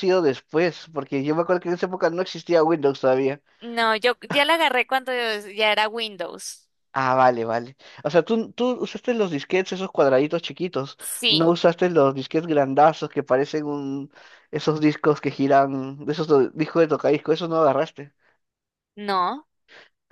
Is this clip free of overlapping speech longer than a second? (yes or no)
yes